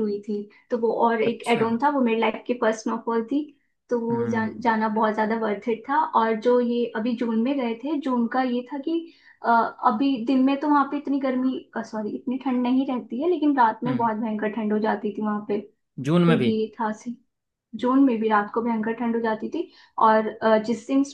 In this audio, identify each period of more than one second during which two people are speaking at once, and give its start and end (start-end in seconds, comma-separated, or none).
none